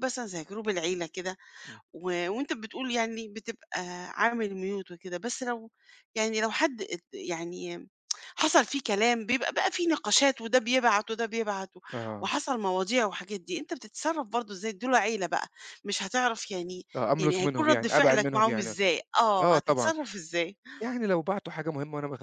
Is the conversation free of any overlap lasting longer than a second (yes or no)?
no